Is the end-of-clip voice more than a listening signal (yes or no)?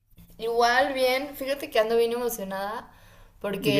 no